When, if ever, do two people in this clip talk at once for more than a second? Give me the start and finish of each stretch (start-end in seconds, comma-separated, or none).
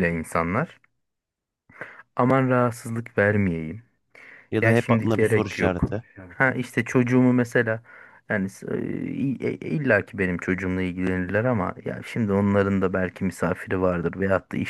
4.6-5.8